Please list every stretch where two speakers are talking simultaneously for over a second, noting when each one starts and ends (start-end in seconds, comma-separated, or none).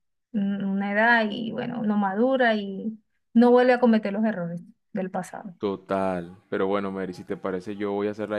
none